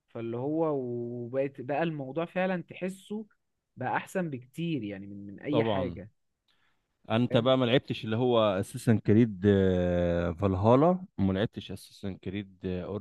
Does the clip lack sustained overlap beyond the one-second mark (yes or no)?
yes